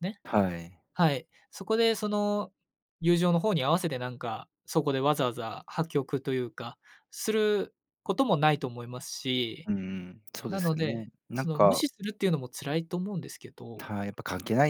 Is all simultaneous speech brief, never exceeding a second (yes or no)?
no